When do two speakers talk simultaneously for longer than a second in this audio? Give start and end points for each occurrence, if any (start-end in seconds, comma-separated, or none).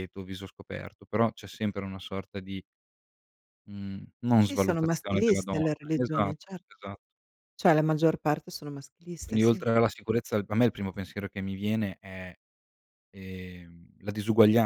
4.5-6.3